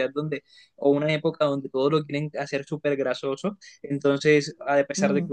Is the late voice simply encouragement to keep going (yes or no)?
yes